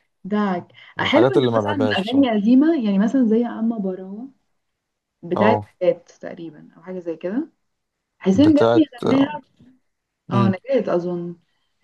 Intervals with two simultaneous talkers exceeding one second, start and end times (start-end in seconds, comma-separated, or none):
1.0-2.4